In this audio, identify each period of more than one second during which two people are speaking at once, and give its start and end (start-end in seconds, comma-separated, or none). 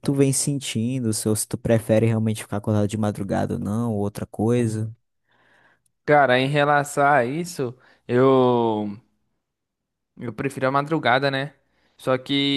none